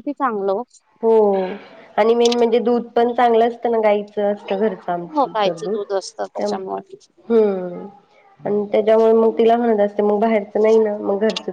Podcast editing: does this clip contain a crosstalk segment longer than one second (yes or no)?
yes